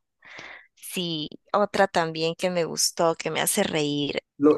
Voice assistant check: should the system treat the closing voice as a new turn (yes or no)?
yes